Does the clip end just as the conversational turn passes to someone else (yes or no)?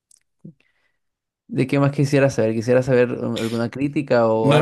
yes